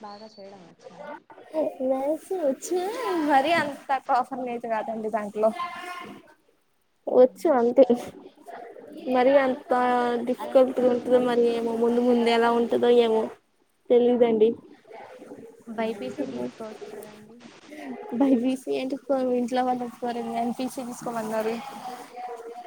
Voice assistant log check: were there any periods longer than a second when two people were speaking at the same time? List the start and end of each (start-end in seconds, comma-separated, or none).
10.4-12.5